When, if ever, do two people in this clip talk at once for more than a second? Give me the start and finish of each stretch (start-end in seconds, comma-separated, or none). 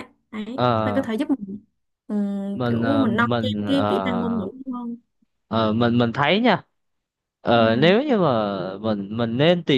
2.5-4.5